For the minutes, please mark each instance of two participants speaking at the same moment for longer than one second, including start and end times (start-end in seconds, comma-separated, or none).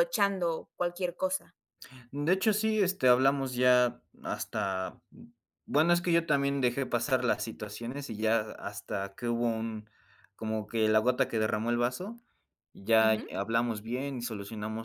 none